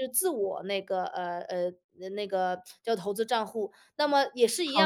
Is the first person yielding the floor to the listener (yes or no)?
no